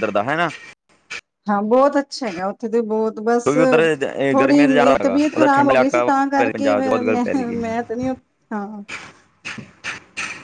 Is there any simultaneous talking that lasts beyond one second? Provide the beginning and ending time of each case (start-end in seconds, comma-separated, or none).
4.4-7.6